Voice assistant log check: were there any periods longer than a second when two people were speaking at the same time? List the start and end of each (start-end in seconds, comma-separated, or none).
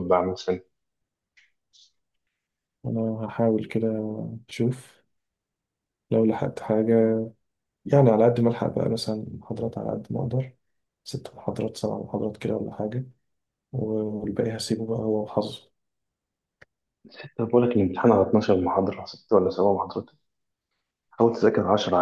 none